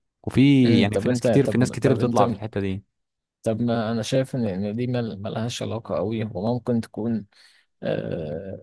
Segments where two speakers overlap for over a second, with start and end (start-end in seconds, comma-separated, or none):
0.8-2.2